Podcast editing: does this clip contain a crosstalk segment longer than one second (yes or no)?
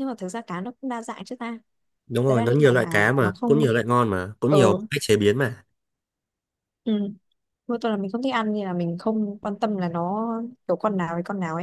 yes